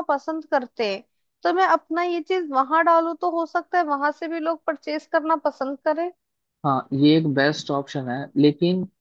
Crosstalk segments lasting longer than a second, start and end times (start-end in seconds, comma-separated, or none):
none